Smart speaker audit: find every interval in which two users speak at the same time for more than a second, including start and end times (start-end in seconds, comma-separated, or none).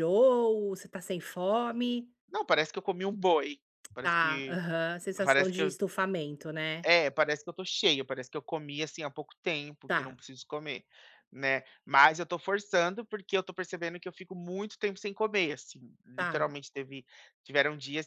none